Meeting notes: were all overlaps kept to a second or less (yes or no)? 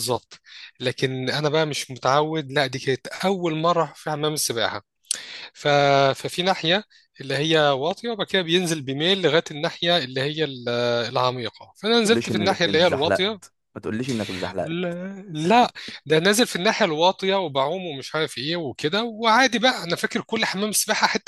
no